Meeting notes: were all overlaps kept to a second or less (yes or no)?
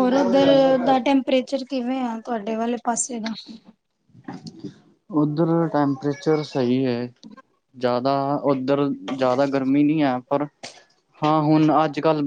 yes